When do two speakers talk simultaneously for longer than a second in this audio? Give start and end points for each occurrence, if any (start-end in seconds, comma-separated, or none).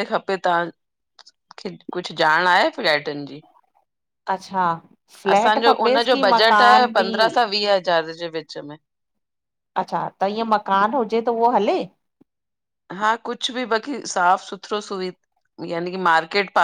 5.3-7.0